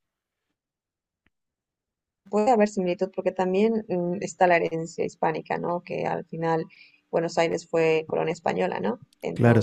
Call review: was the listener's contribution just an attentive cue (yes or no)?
yes